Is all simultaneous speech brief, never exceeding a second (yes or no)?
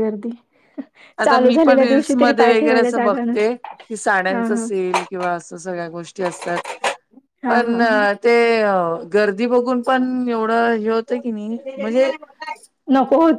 no